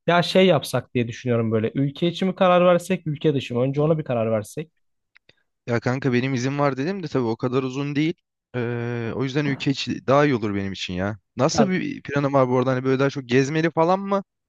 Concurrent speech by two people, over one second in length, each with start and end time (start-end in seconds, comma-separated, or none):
none